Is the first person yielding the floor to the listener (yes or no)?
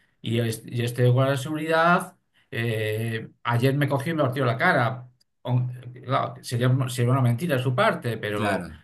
no